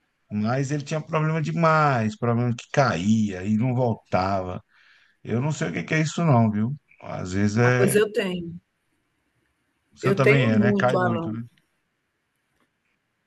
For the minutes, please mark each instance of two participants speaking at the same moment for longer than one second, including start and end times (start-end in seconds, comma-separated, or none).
10.0-11.3